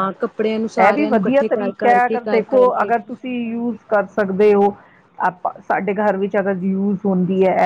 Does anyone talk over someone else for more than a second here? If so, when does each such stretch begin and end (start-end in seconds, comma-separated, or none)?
0.9-2.9